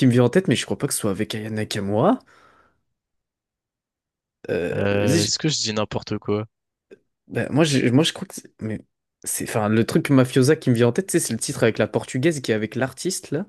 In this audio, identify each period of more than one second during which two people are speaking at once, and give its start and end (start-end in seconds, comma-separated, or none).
none